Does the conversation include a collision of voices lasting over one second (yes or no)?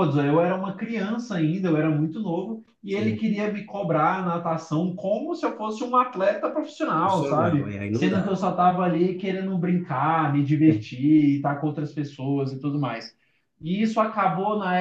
yes